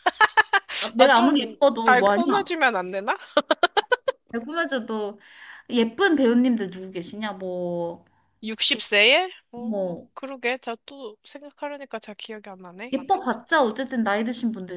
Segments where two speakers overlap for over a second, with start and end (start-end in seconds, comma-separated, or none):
1.0-2.2